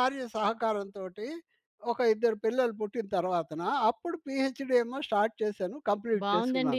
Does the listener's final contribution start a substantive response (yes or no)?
yes